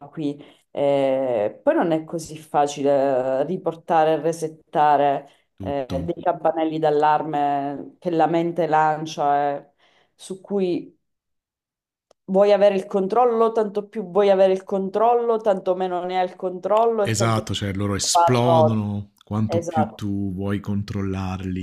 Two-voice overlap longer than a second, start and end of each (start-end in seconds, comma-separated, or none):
17.0-18.8